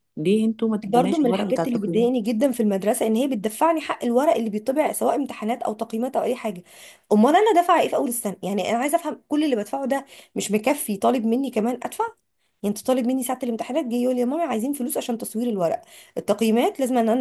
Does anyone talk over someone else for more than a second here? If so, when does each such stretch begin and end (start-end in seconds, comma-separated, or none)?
0.9-2.1